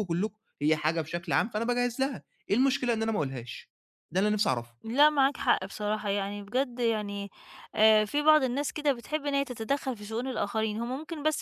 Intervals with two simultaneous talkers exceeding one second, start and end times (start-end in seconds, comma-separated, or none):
none